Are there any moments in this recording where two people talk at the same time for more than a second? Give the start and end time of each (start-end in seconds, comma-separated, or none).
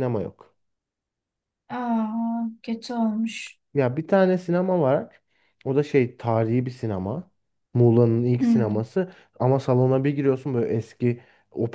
none